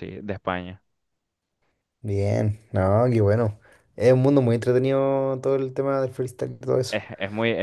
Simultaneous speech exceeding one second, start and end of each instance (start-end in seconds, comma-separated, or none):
none